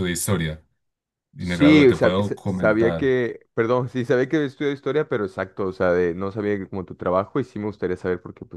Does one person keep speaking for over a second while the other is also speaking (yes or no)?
yes